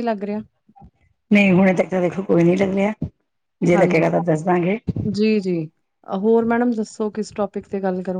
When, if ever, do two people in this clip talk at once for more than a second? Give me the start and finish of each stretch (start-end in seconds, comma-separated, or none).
none